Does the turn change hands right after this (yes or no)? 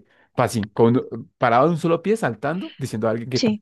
no